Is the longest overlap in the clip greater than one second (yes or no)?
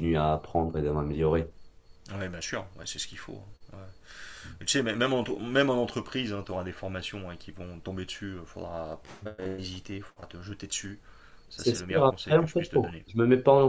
yes